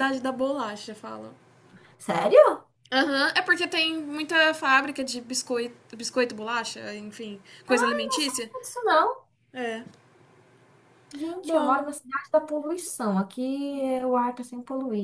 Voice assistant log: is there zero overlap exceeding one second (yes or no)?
yes